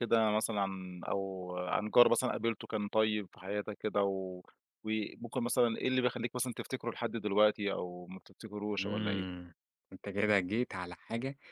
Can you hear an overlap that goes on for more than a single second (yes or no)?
no